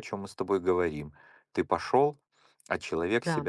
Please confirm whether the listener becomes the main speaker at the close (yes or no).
no